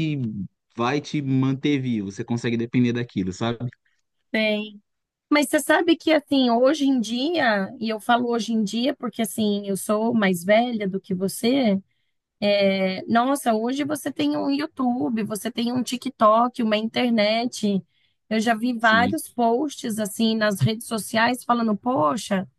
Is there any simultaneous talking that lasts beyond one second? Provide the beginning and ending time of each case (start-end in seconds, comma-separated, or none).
none